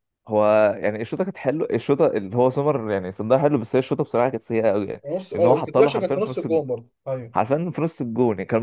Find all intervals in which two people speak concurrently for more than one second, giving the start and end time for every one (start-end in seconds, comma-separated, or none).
4.8-6.6